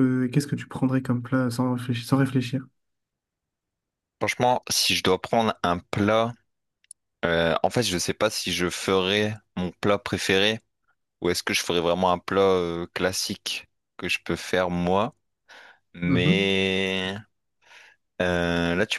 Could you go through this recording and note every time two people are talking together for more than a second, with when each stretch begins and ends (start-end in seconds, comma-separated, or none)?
none